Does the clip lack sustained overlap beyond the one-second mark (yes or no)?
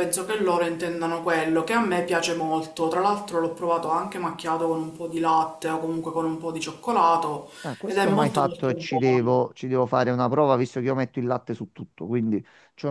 no